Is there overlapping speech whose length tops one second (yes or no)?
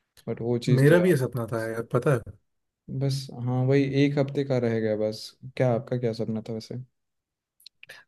no